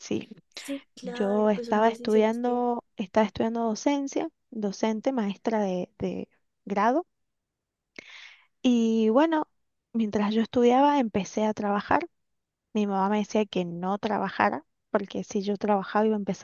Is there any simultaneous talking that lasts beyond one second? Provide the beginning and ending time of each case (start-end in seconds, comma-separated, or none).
1.0-2.6